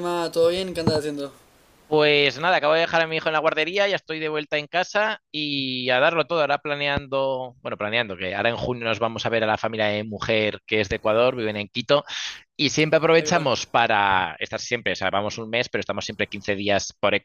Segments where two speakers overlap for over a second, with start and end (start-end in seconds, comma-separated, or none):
none